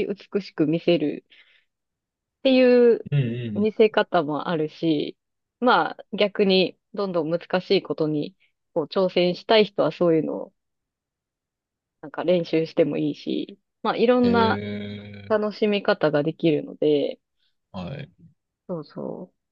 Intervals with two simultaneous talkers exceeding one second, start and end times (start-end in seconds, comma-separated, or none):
none